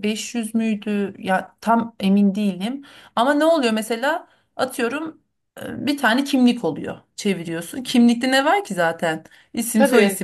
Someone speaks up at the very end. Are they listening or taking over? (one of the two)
listening